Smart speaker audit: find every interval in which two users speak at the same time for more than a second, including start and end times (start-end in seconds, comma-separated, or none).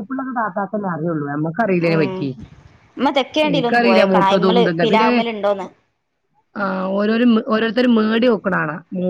3.5-5.1